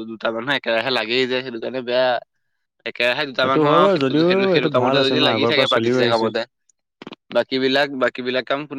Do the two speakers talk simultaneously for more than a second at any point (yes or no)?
yes